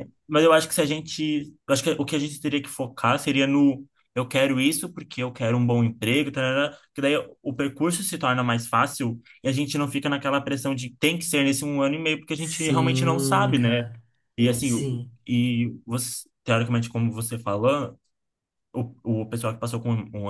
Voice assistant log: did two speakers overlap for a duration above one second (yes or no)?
yes